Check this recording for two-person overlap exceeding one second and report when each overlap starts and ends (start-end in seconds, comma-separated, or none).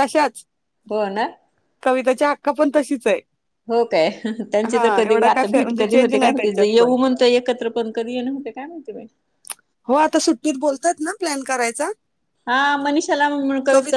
4.7-6.9